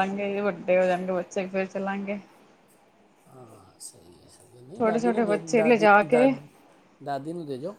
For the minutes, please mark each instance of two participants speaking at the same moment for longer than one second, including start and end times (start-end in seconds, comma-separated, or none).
4.8-6.3